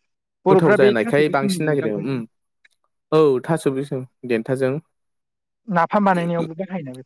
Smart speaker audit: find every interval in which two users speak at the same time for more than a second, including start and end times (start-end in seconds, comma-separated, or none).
0.5-2.2